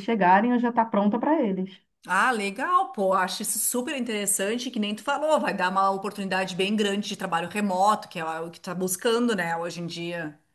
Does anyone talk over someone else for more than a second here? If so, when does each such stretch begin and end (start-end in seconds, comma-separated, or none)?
none